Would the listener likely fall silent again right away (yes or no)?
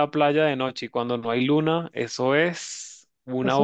no